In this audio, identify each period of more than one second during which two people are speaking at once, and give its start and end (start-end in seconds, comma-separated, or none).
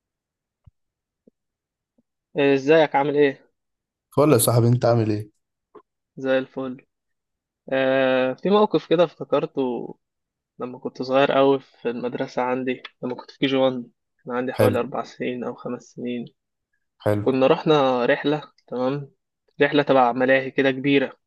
none